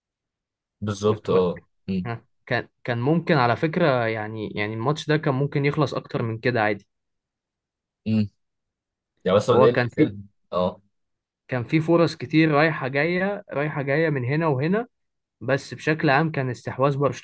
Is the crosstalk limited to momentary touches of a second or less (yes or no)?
yes